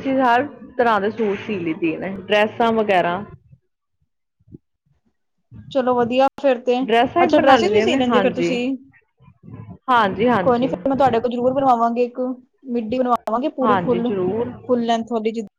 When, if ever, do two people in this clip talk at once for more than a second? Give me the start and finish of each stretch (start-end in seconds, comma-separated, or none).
7.2-8.5